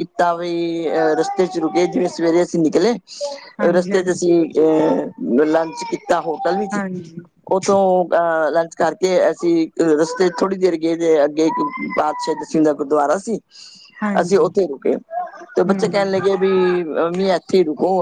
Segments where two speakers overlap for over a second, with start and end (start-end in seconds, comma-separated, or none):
none